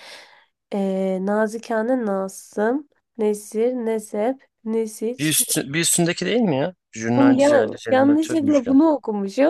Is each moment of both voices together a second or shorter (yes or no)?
no